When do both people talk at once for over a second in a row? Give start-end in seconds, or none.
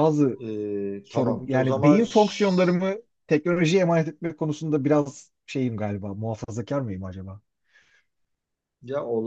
1.0-2.8